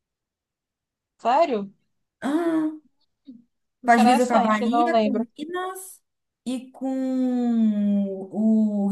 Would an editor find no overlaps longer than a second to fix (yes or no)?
no